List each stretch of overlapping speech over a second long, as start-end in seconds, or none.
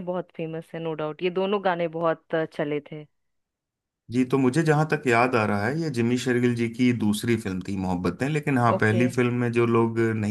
none